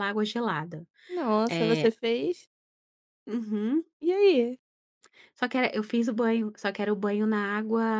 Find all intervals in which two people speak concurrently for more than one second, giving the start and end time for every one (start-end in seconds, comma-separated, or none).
none